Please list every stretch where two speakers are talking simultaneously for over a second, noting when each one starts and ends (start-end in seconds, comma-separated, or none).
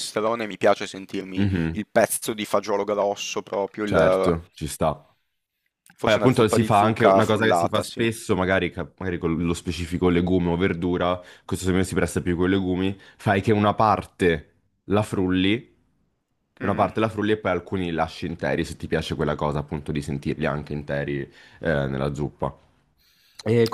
6.0-8.0